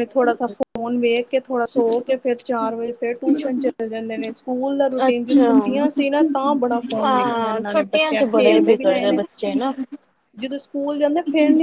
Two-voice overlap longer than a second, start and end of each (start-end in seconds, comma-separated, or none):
7.0-9.2